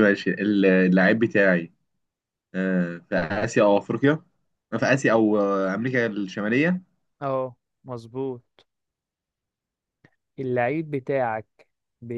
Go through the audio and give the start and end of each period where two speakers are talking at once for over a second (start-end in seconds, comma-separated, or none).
none